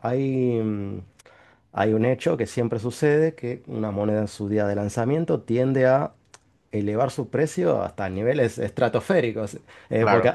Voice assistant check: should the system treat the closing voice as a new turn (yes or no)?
no